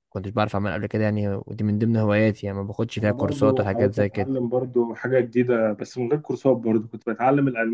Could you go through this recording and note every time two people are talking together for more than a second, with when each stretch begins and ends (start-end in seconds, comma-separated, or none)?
3.0-4.3